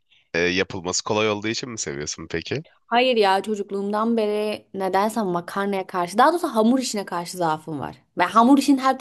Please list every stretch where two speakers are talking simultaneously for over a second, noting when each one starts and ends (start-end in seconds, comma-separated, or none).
none